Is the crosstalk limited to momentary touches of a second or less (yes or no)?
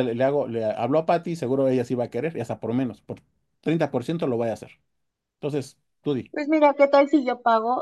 yes